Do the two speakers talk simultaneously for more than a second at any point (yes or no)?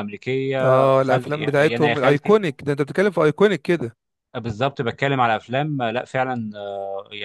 yes